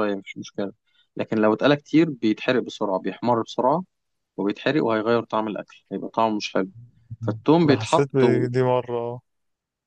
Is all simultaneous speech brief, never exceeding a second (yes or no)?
yes